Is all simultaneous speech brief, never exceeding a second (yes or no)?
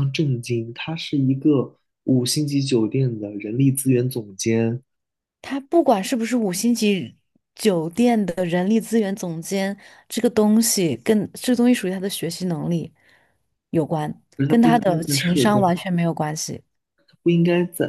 no